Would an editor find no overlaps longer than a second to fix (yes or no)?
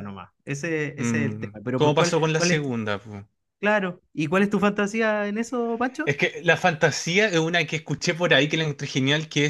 no